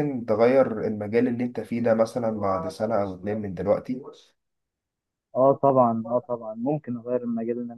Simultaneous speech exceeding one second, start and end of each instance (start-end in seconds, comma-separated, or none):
none